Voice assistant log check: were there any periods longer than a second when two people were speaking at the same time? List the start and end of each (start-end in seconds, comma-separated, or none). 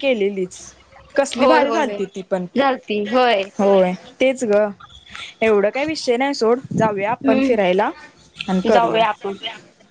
none